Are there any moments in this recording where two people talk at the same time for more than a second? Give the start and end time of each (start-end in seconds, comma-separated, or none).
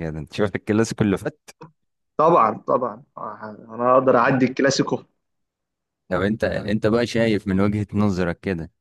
none